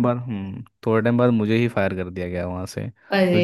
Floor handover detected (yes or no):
no